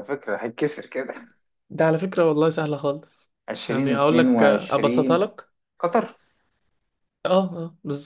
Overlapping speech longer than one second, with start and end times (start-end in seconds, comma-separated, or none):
3.7-5.3